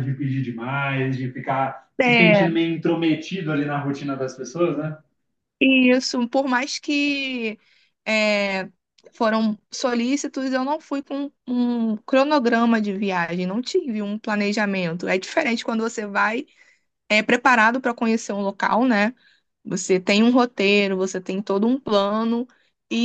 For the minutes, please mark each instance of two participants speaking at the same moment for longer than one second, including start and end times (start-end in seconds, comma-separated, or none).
none